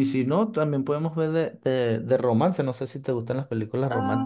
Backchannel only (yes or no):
no